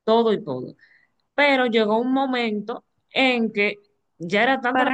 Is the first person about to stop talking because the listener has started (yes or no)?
yes